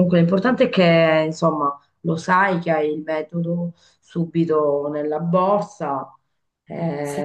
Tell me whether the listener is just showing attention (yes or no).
no